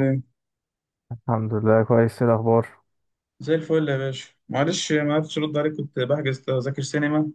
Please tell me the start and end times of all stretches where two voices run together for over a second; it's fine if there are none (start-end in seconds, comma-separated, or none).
none